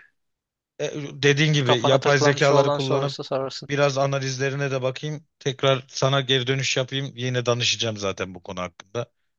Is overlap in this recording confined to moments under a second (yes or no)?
no